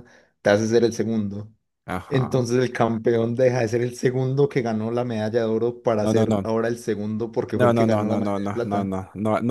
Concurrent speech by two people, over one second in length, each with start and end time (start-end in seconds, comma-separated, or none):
7.5-8.9